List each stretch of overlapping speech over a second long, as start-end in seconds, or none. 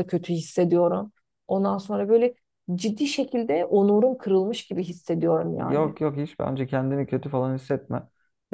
none